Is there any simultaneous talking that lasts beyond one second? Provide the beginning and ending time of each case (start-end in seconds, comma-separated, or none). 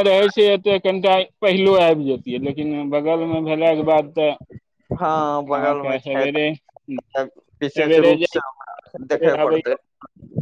5.6-7.1